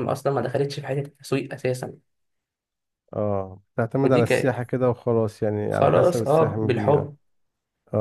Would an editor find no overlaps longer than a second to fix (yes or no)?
no